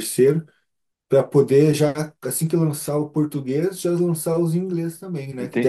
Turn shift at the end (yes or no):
no